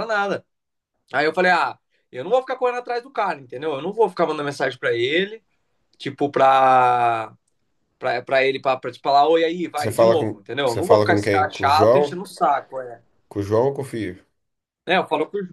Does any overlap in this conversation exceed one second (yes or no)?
yes